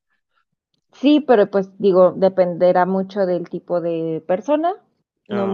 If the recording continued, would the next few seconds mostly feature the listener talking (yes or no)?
no